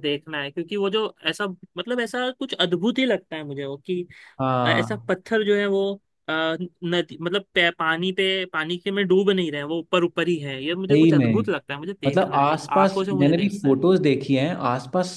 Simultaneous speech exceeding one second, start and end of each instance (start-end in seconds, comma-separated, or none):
12.1-13.8